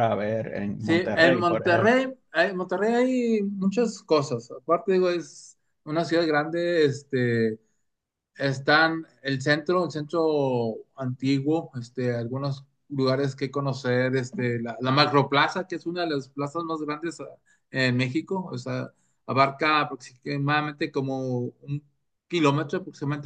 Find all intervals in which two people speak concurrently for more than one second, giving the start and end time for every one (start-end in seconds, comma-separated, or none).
0.8-2.0